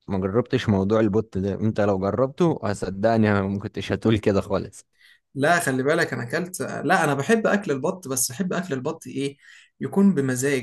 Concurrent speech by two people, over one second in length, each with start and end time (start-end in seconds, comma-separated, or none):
none